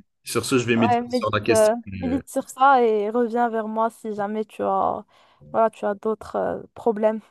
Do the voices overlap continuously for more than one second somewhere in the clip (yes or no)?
yes